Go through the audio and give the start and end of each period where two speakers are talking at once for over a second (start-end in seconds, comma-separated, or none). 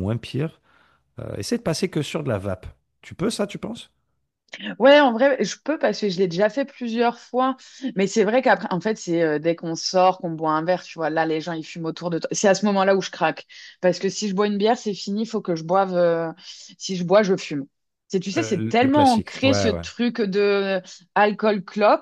18.4-19.8